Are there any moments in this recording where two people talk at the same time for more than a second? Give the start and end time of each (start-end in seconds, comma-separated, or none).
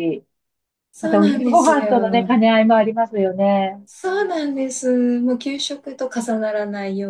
1.0-2.4